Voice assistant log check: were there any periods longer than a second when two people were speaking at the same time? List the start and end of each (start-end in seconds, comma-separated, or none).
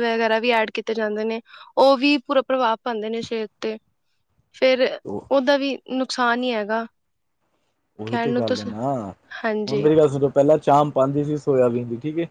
none